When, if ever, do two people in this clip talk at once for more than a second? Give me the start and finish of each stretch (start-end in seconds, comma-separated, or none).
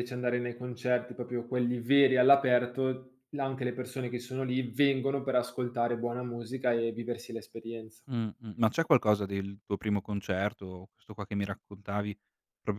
none